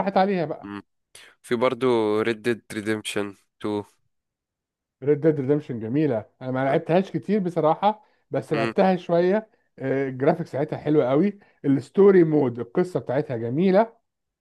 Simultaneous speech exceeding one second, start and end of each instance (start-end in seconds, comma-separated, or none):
none